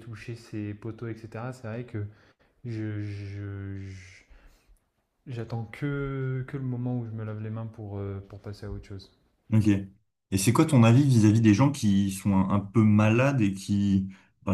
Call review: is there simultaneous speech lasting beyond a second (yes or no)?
no